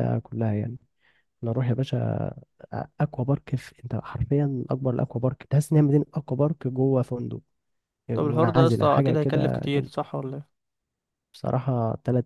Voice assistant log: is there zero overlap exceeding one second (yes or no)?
no